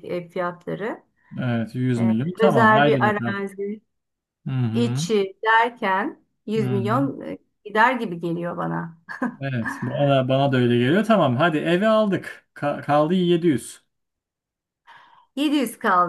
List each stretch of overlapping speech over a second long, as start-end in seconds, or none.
2.0-3.4